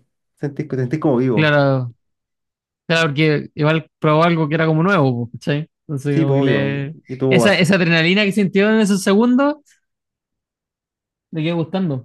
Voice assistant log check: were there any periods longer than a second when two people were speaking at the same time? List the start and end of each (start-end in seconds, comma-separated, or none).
6.1-7.7